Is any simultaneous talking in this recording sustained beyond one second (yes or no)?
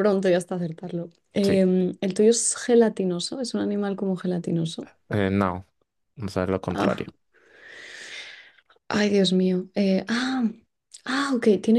no